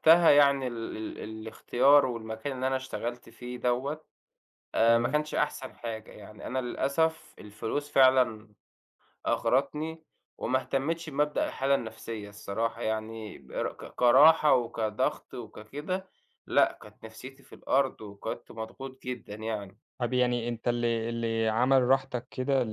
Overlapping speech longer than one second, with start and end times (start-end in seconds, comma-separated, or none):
none